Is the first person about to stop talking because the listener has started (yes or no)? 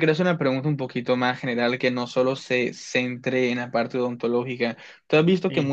no